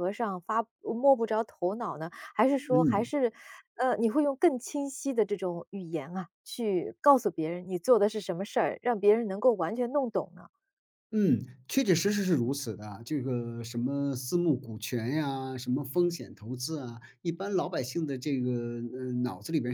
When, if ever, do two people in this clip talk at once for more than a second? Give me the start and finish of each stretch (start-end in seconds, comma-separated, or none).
none